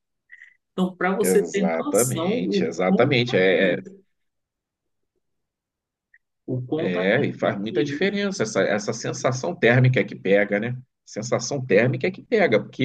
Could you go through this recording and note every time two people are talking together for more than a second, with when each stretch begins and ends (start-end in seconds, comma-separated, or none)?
1.2-3.9, 6.8-8.1